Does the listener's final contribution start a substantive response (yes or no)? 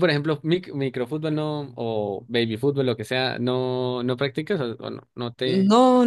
yes